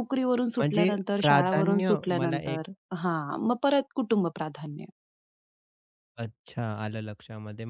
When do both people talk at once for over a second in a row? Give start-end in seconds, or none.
0.6-2.6